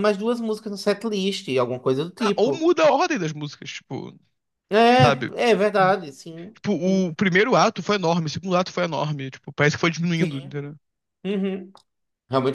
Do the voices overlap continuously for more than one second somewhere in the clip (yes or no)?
no